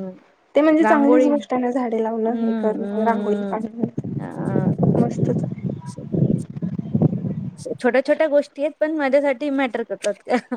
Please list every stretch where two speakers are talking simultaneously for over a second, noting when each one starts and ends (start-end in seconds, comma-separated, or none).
2.1-3.6